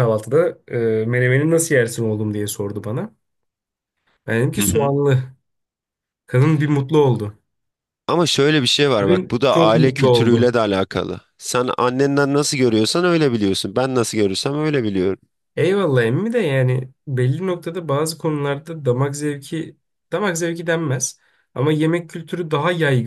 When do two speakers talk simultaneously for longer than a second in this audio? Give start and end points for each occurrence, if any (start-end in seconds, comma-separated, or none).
9.0-10.6